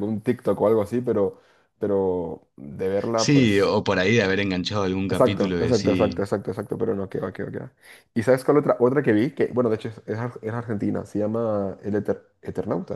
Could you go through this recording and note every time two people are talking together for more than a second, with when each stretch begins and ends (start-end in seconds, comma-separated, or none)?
5.0-6.3